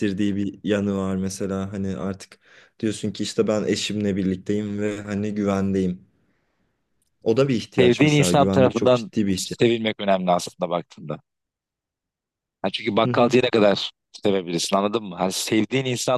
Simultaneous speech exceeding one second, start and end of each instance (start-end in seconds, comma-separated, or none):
7.8-9.6